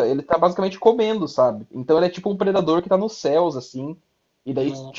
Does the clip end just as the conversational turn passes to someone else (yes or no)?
no